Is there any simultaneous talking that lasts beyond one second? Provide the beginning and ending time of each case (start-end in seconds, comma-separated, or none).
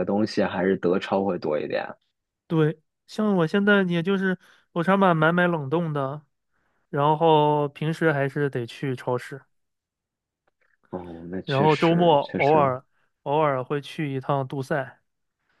11.4-12.7